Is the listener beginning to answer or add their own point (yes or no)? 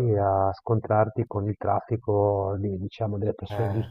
no